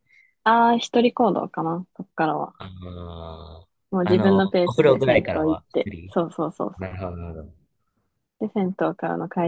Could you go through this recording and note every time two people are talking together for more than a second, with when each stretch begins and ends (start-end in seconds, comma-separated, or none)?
3.9-6.1